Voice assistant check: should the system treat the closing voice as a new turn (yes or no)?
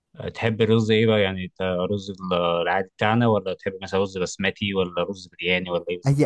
yes